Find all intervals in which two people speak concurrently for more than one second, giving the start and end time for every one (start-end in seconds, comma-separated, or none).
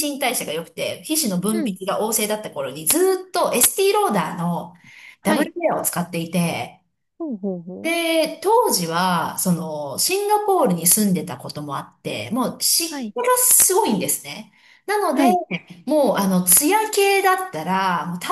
none